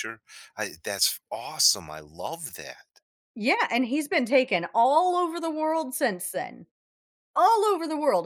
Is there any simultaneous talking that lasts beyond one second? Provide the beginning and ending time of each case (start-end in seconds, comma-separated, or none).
none